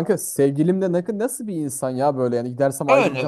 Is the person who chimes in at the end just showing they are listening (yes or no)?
no